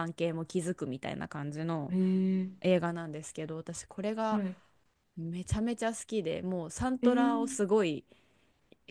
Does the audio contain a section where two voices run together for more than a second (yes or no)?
no